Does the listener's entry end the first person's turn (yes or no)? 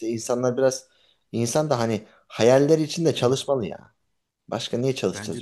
yes